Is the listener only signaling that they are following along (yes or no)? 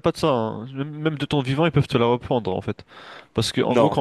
yes